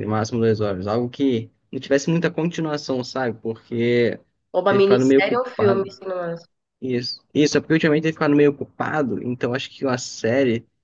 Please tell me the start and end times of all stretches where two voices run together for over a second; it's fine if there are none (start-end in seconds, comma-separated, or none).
4.7-5.9